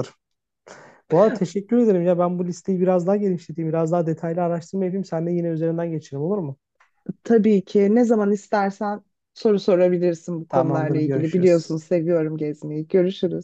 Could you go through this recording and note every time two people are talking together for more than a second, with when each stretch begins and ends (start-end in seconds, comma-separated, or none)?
10.5-11.7